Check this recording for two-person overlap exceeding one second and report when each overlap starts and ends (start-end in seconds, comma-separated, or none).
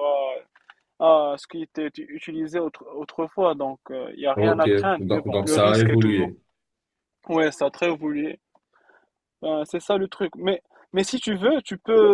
4.3-6.3